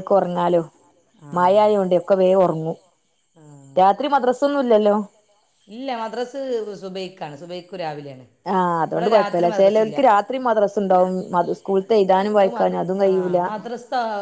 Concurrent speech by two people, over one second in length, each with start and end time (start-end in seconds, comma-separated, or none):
8.9-10.3